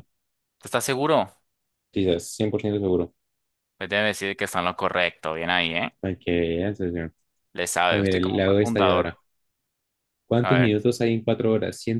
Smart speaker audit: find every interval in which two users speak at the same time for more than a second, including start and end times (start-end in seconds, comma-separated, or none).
7.9-9.1